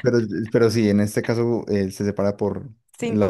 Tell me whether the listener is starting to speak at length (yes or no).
no